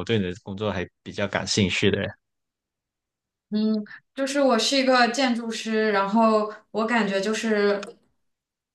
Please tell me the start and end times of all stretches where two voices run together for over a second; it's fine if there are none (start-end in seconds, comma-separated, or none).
none